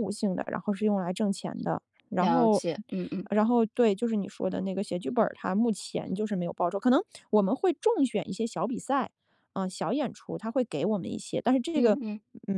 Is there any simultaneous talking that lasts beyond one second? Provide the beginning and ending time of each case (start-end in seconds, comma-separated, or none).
none